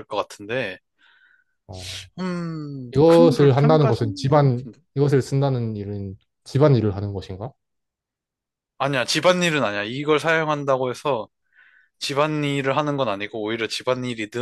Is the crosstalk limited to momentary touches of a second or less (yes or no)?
no